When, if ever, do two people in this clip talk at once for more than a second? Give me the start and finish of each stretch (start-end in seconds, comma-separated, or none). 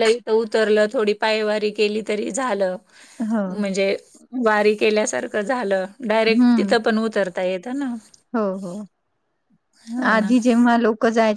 none